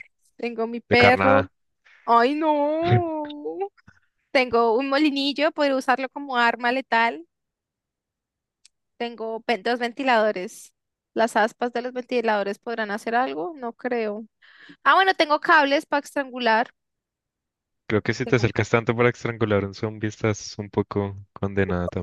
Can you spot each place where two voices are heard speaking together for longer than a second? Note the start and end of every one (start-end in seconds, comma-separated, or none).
none